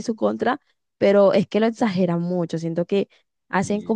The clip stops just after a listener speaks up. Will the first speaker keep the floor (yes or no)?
yes